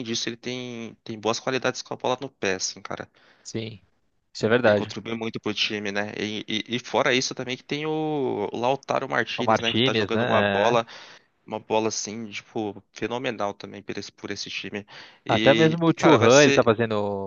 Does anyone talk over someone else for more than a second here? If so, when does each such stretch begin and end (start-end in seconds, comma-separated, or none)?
9.4-10.8, 15.3-16.7